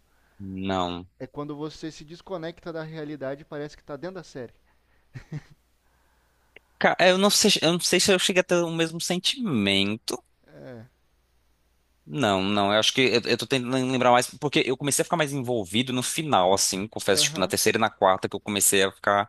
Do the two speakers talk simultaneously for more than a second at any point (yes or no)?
no